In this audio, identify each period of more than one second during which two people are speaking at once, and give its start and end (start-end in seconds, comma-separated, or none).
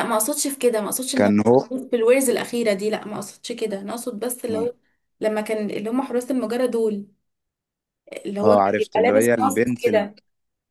8.4-10.1